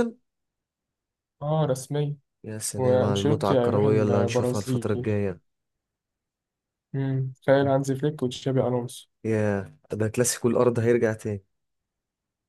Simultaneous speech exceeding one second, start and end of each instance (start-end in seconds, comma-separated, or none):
2.8-4.9